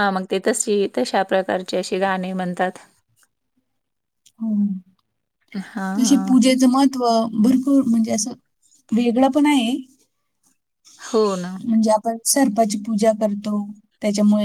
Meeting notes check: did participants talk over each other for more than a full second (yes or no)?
no